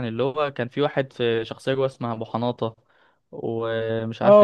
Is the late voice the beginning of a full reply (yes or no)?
yes